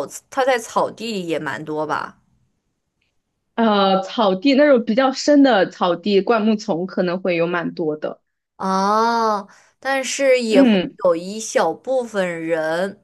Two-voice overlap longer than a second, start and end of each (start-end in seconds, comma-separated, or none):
none